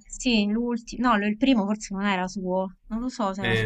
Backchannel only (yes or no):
no